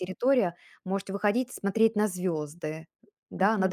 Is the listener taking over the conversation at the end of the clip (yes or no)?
yes